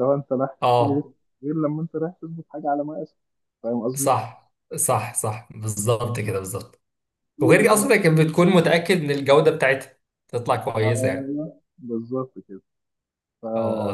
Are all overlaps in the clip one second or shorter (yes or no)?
yes